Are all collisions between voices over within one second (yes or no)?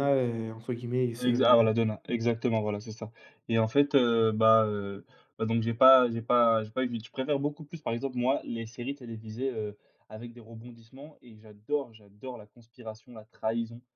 yes